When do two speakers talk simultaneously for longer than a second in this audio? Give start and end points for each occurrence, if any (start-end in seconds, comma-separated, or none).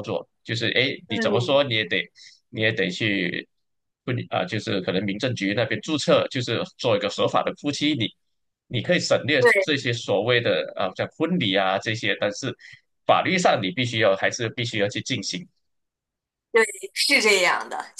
none